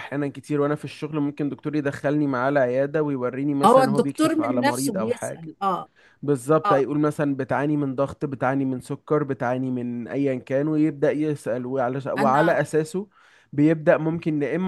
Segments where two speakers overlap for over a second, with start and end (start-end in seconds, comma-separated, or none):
3.6-5.5